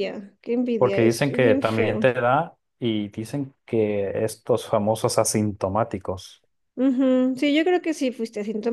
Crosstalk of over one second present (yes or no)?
yes